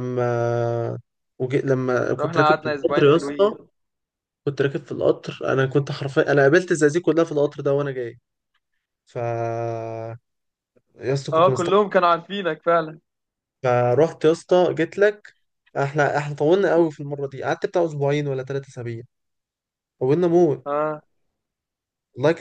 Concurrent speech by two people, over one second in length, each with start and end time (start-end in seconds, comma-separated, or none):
2.2-3.6